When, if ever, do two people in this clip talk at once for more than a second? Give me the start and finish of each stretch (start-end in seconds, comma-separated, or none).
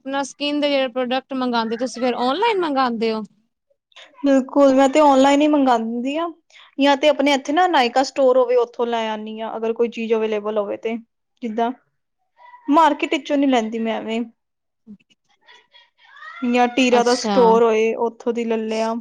none